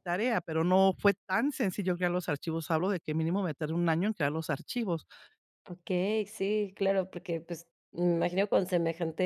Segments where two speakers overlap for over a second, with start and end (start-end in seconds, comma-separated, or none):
none